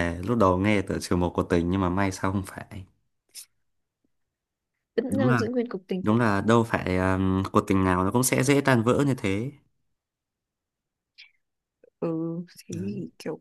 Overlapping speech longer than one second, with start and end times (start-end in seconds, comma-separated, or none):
none